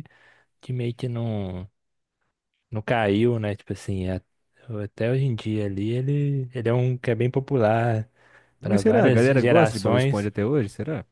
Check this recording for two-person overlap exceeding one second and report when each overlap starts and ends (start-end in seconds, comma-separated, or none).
8.6-10.3